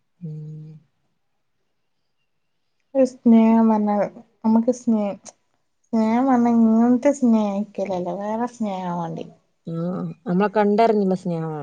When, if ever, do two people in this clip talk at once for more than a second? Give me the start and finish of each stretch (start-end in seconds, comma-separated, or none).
none